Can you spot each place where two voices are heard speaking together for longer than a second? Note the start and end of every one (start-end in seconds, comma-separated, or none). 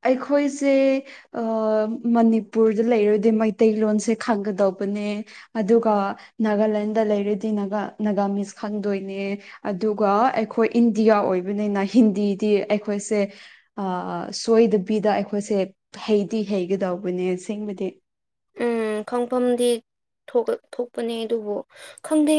none